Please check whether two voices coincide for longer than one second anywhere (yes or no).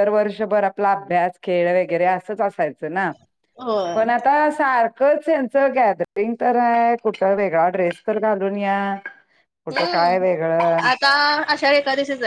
no